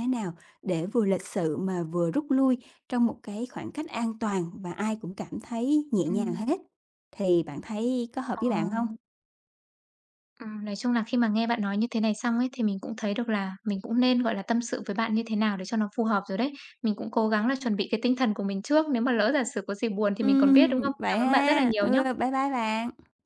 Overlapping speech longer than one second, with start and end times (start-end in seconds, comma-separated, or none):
20.2-22.2